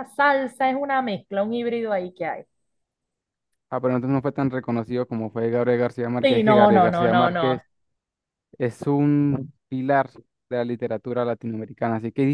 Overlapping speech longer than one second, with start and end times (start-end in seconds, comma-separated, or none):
6.2-7.6